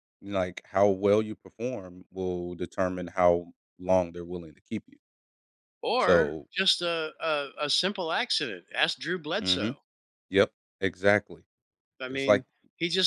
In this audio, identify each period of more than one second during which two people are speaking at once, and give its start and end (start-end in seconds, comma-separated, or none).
none